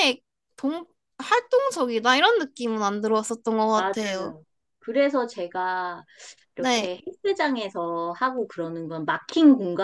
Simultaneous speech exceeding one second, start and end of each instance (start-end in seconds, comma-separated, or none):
none